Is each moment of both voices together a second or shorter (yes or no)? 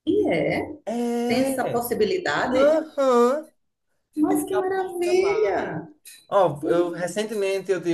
no